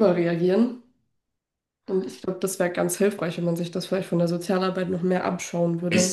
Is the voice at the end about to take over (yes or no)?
yes